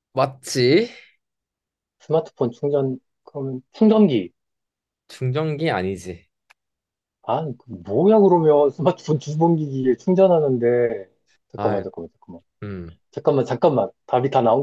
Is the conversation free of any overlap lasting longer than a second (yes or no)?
yes